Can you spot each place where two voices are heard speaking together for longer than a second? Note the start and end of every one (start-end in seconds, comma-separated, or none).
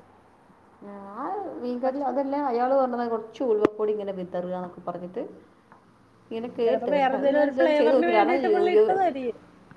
6.7-8.8